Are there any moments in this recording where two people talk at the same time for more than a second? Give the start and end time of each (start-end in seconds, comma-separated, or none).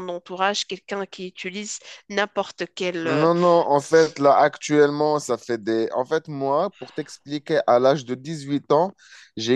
none